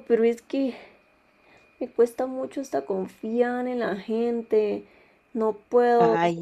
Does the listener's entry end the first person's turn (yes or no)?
no